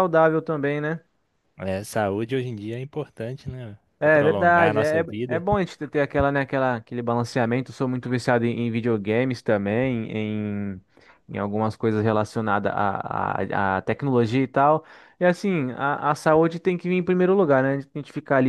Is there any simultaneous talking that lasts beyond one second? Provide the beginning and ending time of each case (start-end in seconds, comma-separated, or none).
4.0-5.4